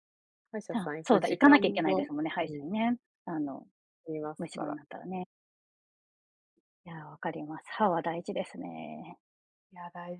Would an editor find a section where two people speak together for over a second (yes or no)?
yes